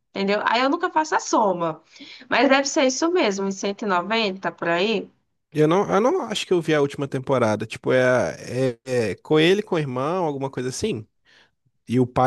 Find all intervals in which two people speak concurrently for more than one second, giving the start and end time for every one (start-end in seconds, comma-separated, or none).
none